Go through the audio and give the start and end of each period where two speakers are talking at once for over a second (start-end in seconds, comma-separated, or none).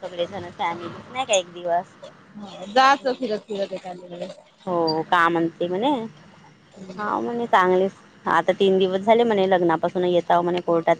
none